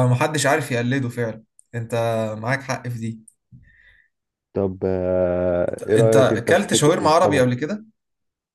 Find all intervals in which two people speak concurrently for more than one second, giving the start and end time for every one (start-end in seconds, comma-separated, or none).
6.0-7.6